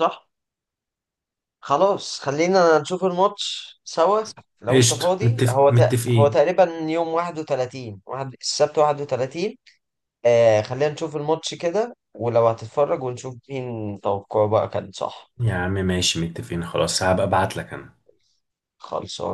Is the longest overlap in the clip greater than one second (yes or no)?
yes